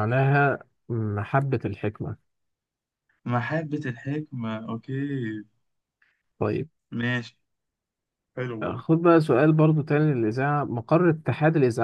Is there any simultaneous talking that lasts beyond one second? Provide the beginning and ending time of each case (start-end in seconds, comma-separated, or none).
none